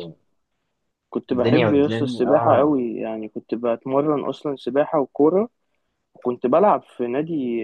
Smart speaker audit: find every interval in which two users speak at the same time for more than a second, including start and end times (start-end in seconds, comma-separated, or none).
1.3-2.8